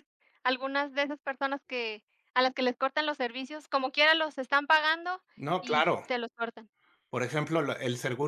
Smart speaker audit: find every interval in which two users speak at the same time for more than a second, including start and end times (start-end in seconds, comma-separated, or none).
none